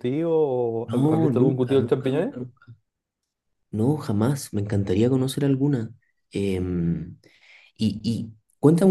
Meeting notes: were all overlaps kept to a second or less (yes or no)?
no